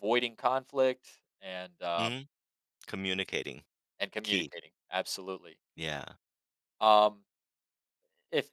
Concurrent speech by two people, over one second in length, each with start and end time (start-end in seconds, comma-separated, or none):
none